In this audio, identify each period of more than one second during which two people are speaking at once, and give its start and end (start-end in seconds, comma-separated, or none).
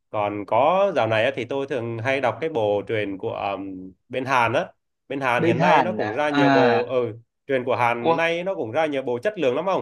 5.4-7.0